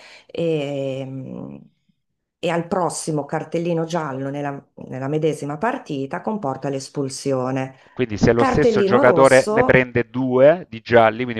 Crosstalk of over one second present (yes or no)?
yes